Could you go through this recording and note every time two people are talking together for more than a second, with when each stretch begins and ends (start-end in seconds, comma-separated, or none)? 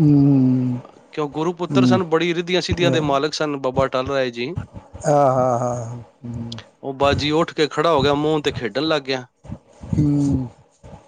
none